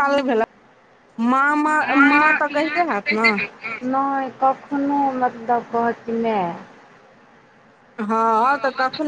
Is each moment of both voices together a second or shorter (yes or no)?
yes